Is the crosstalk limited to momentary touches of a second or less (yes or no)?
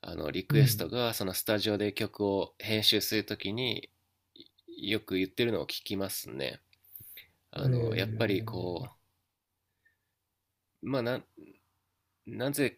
no